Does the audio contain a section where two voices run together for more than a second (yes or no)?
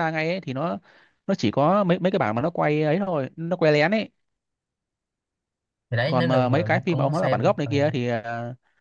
yes